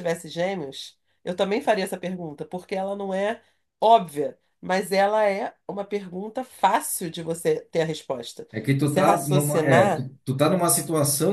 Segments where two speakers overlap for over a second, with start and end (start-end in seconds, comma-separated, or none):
8.5-10.1